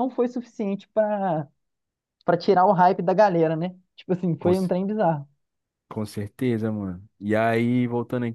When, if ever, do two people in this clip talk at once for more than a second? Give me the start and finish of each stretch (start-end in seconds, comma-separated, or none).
none